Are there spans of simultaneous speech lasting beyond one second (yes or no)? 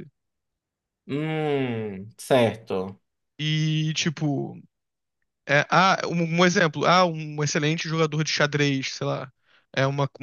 no